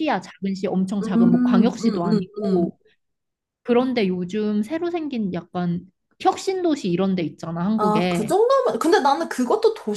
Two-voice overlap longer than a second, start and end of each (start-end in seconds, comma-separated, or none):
1.0-2.7